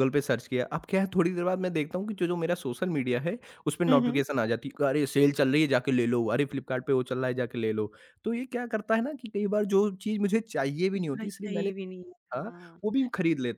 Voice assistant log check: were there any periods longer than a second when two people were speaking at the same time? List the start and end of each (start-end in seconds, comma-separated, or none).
11.0-12.4